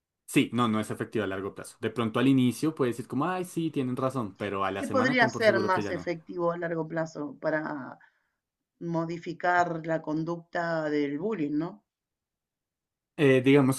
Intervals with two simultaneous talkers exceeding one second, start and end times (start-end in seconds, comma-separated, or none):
4.8-6.1